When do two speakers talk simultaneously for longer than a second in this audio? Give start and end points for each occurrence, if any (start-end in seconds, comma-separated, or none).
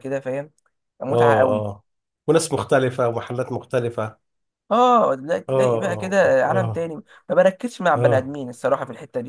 5.5-6.9